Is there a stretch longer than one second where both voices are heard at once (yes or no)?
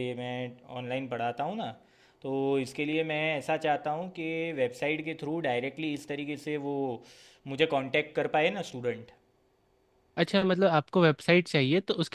no